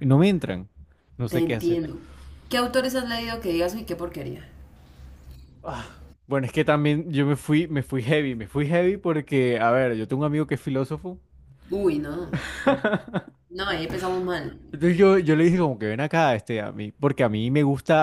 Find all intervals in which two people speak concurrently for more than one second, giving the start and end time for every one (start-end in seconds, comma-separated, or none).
none